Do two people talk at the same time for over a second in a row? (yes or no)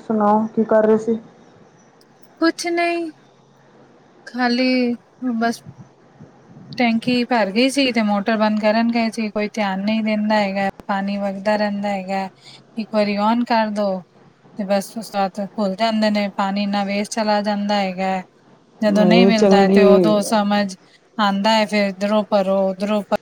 yes